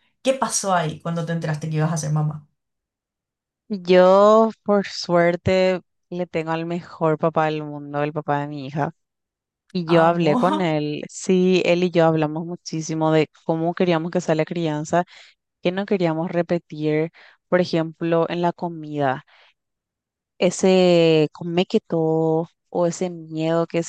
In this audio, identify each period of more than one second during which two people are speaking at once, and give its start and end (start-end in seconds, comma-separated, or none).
none